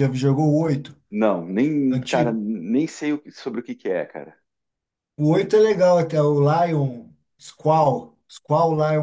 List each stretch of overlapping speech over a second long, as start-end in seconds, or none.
none